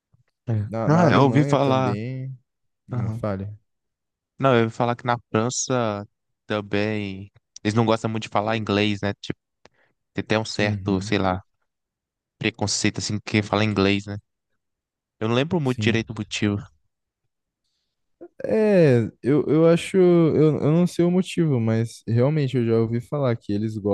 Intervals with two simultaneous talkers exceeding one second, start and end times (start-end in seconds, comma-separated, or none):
0.7-1.9